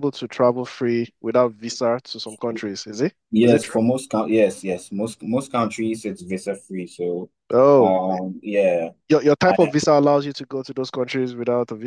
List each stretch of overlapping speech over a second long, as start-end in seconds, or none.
none